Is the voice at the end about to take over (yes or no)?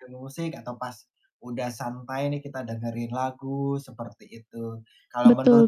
no